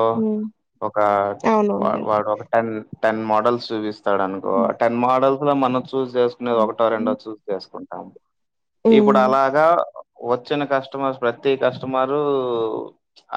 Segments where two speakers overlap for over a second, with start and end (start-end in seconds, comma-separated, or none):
none